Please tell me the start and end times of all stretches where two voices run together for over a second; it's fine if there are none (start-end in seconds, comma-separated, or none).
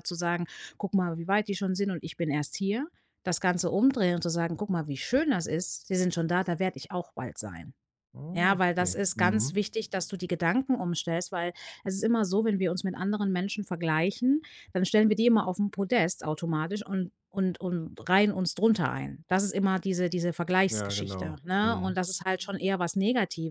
8.3-9.6, 20.7-22.0